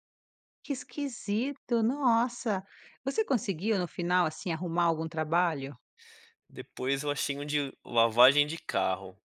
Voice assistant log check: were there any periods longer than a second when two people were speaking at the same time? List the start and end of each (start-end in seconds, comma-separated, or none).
none